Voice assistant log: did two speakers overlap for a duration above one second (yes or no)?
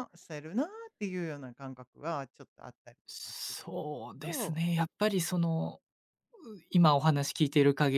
yes